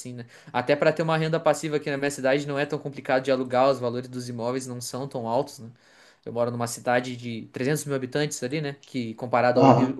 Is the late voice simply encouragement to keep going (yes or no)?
yes